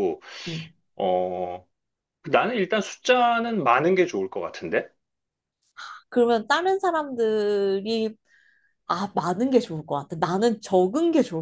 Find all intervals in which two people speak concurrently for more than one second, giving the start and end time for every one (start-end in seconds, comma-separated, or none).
none